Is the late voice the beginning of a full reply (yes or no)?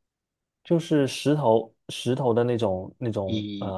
yes